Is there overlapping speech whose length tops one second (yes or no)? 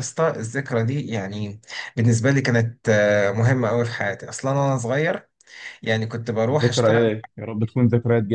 no